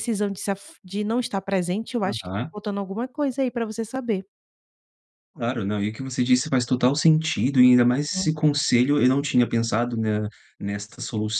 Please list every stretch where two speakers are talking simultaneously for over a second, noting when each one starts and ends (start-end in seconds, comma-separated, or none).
none